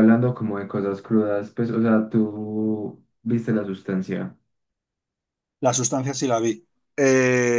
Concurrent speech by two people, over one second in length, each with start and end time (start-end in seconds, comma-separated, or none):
none